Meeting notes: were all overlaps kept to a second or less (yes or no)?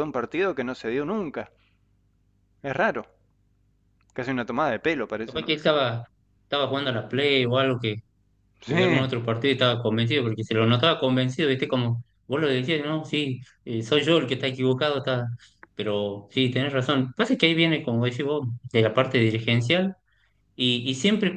yes